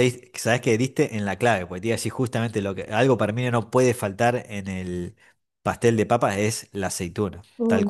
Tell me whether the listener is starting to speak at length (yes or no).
yes